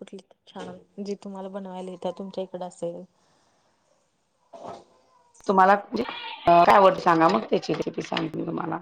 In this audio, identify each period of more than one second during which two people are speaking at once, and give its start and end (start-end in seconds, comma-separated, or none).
none